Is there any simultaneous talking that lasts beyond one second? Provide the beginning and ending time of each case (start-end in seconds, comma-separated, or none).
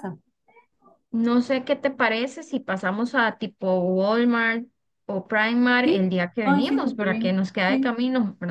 5.8-8.0